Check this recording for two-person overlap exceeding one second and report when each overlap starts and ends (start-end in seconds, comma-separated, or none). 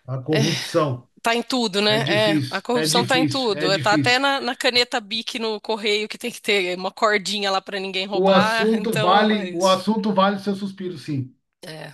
1.9-4.2, 8.1-9.8